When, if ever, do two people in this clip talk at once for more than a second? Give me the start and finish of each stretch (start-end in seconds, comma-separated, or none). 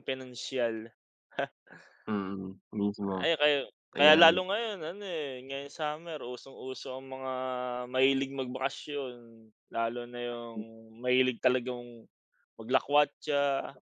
none